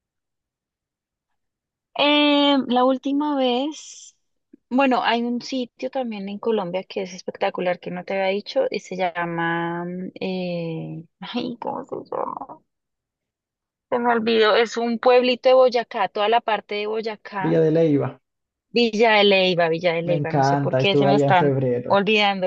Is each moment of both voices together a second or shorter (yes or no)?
no